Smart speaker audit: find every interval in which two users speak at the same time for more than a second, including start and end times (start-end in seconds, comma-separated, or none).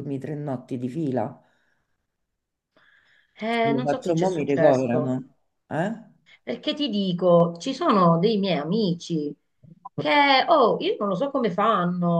3.6-5.2